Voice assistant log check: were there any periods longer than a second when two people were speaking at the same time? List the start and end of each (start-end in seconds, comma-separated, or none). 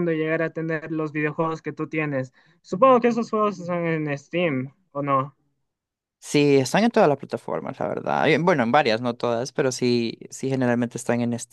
none